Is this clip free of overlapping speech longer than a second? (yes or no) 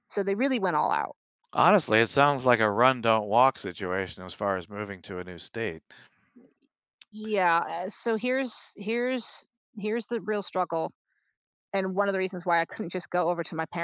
yes